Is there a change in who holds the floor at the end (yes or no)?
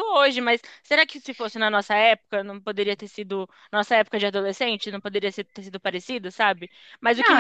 no